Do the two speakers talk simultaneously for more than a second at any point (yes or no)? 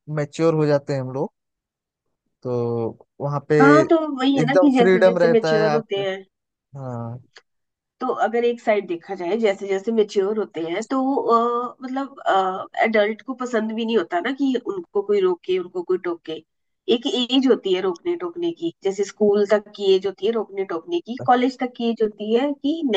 yes